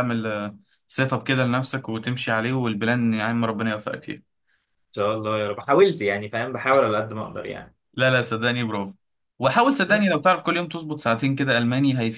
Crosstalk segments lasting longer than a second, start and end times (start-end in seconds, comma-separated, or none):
none